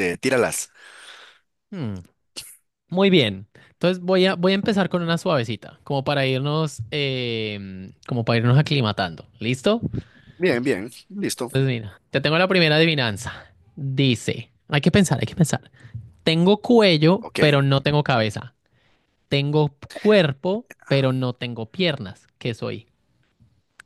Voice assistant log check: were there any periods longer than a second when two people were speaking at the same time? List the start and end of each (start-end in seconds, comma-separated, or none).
none